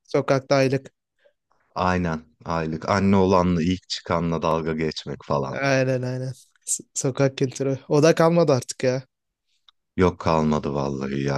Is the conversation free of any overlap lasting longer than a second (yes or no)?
yes